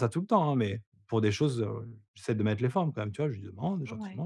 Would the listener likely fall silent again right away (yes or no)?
yes